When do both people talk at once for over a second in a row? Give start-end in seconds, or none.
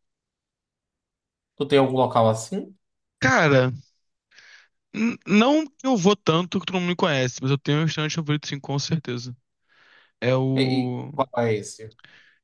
none